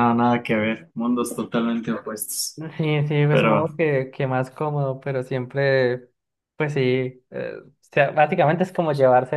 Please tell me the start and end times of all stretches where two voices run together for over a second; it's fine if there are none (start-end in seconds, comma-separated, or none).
none